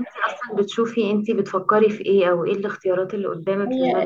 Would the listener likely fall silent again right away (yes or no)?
no